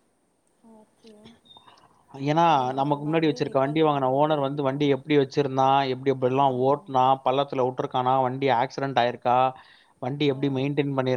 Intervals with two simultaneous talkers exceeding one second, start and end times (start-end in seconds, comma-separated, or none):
2.5-4.8